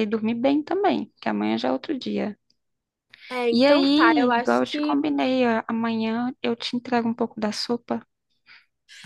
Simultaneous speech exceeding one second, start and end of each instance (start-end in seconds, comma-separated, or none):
3.5-5.0